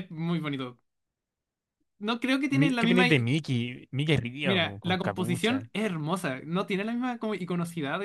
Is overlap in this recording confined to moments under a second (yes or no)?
no